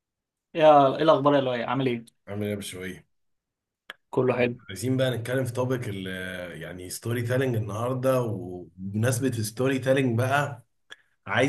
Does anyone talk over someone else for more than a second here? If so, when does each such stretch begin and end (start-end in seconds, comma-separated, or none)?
none